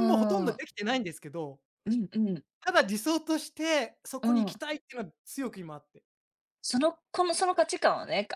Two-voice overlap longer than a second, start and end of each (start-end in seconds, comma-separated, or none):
none